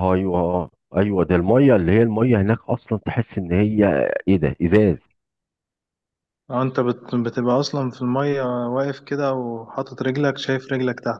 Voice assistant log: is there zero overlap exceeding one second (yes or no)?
yes